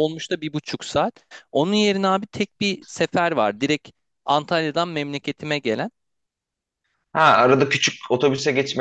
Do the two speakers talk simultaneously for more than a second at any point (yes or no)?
no